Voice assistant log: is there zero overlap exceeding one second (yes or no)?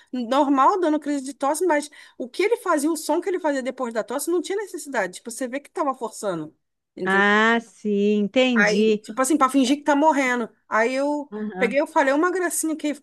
yes